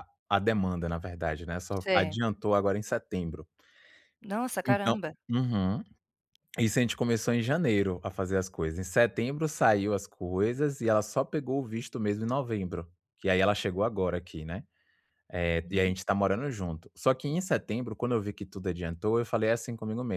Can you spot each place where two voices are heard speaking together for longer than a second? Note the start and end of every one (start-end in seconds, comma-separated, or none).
none